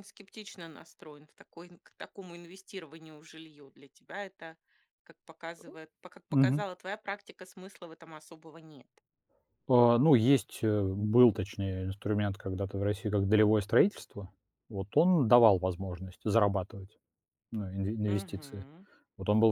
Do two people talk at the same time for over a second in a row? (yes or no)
no